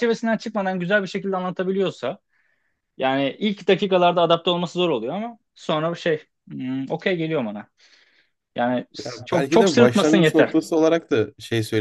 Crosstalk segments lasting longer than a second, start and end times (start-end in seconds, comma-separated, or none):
9.1-10.5